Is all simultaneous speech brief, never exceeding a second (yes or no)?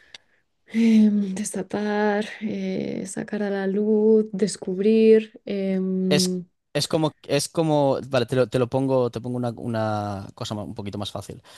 yes